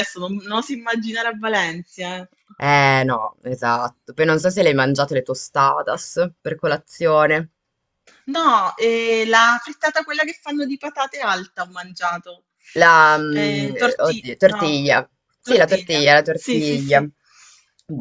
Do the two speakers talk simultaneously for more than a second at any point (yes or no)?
yes